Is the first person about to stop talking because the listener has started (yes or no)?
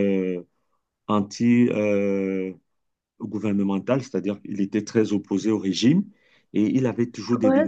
no